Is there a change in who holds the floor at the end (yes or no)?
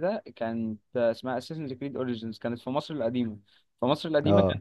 no